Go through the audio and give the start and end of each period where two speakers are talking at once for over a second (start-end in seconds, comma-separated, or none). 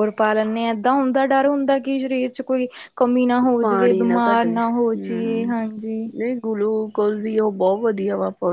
3.6-5.5